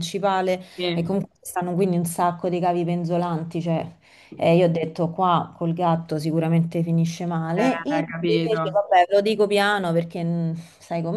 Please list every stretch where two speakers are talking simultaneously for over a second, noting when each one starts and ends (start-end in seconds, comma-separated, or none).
7.5-8.8